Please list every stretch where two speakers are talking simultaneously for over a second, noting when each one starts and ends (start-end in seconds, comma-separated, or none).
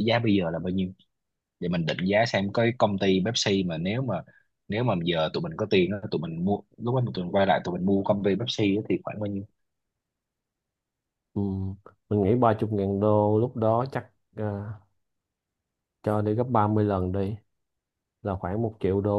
none